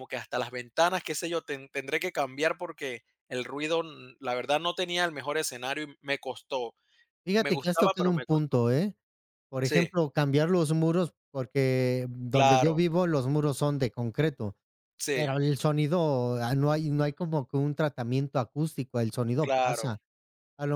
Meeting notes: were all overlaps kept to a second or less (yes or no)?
no